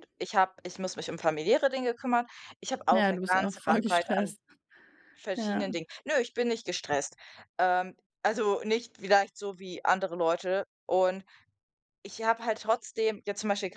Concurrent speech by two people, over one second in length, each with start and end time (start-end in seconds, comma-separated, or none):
2.9-4.3